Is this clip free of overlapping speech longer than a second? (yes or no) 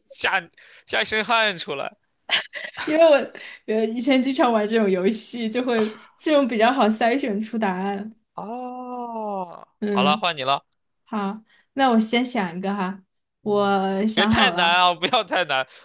no